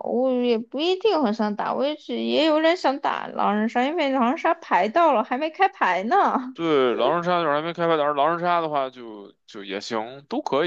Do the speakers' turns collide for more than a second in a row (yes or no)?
no